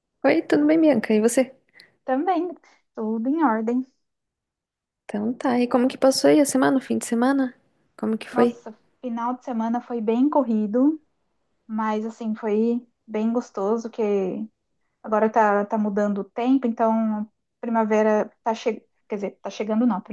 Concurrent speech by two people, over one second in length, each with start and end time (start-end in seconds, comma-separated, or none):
none